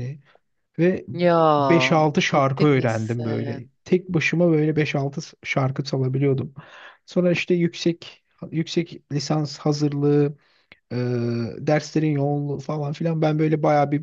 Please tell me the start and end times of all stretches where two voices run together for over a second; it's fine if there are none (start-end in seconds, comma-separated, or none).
2.3-3.6